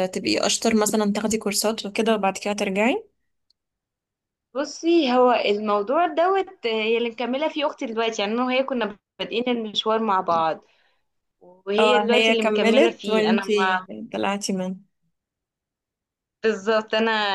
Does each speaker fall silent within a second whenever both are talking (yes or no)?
no